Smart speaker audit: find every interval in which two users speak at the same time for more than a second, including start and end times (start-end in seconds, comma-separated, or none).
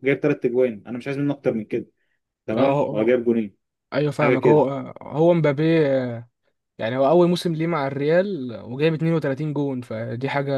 none